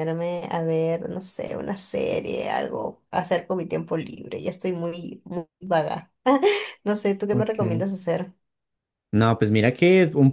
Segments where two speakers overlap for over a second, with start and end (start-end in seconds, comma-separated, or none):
none